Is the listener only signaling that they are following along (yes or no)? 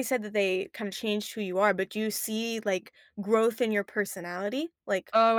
no